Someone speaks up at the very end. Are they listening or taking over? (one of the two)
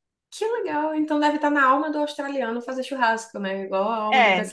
taking over